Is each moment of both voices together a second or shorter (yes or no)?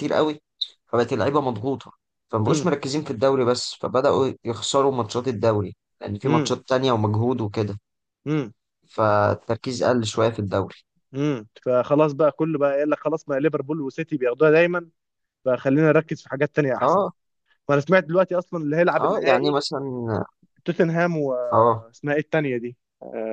yes